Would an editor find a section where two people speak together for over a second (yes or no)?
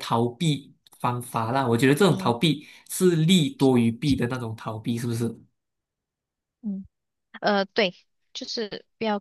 no